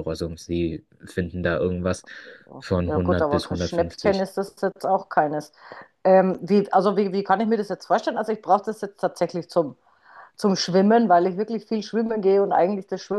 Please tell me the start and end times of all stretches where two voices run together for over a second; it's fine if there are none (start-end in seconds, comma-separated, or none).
2.9-4.3